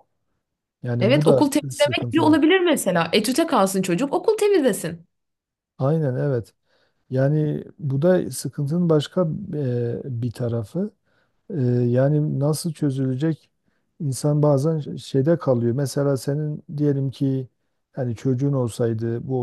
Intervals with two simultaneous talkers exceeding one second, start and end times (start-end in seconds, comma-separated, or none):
1.0-2.4